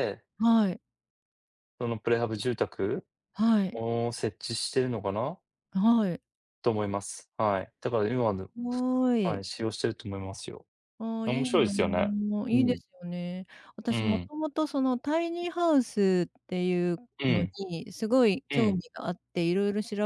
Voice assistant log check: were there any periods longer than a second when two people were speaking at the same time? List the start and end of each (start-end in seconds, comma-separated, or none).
none